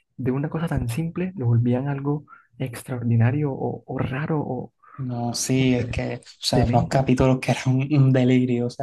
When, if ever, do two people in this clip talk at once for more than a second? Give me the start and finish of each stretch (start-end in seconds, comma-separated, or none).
none